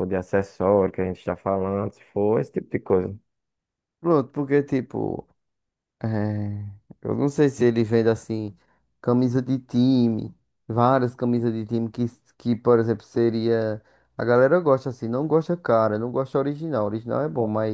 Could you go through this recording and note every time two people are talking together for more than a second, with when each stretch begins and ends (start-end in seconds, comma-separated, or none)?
none